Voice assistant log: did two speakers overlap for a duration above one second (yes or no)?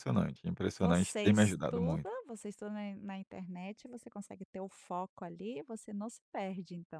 yes